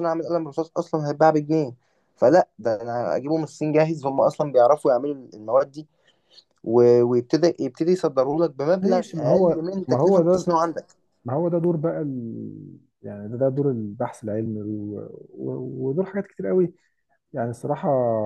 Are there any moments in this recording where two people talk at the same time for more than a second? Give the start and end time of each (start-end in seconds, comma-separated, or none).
8.8-10.5